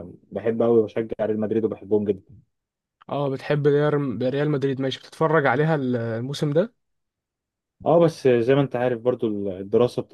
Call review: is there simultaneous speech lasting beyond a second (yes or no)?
no